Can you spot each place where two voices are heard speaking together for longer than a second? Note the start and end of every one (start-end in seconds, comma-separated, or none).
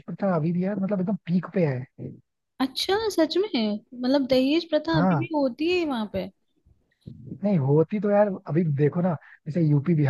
none